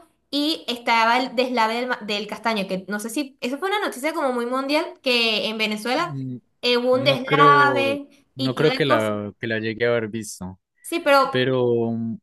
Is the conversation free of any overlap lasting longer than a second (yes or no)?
no